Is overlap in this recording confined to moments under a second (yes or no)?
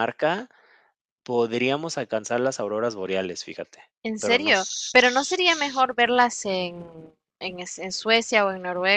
no